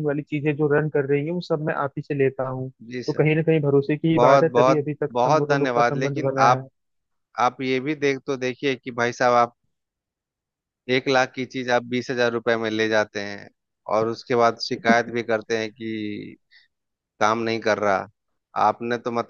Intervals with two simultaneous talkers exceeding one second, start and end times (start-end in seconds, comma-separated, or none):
4.2-6.7